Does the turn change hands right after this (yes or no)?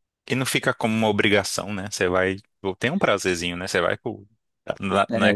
no